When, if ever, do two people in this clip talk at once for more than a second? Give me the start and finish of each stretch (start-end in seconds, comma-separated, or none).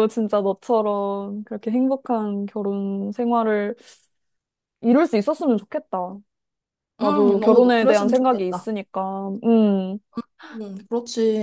7.0-8.7